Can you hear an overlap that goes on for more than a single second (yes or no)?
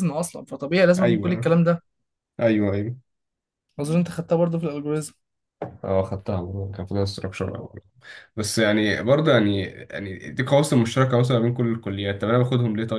no